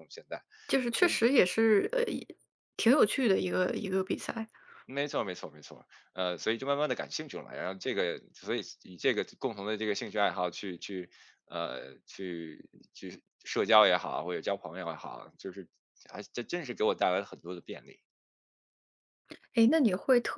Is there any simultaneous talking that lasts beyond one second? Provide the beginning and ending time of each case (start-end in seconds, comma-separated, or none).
none